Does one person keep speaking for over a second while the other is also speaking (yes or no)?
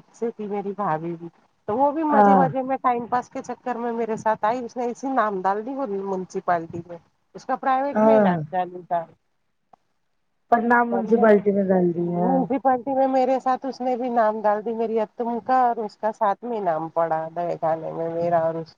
no